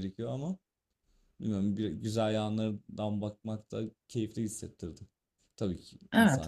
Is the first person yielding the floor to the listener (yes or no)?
yes